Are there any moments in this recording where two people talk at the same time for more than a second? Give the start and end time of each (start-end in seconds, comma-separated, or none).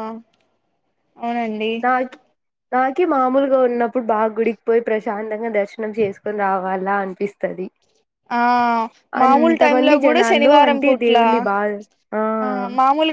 9.2-11.2